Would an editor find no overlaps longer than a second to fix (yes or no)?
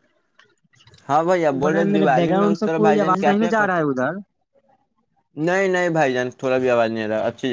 no